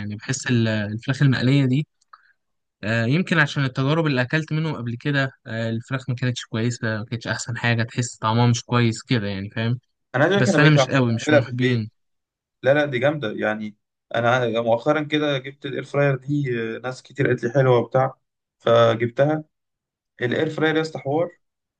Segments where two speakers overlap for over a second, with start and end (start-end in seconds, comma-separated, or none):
10.3-11.9